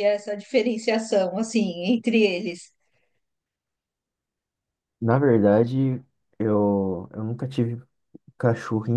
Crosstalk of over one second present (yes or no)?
no